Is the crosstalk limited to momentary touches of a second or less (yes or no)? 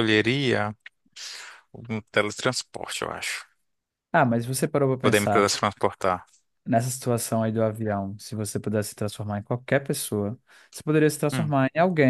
yes